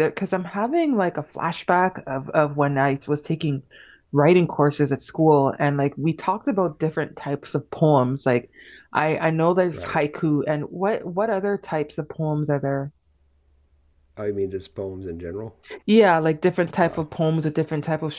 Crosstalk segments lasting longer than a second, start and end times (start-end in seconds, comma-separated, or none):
none